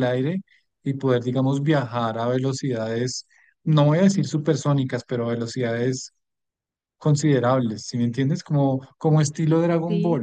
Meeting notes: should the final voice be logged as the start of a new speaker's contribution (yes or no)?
no